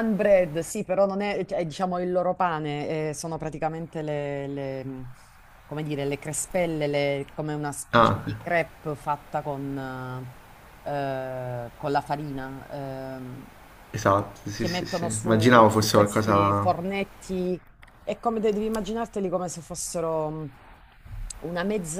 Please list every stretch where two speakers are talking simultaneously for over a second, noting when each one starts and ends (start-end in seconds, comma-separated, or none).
14.6-16.7